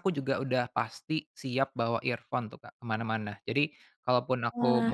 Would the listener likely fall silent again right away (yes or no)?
yes